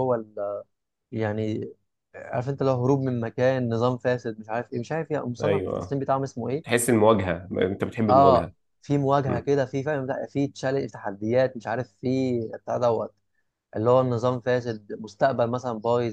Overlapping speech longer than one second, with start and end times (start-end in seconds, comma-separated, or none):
none